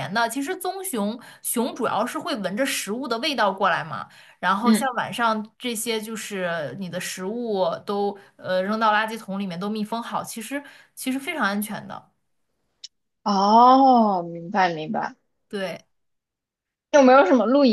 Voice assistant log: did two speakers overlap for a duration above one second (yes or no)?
no